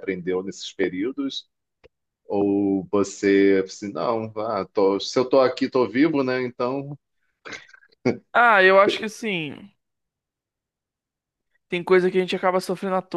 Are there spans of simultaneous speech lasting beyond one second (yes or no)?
no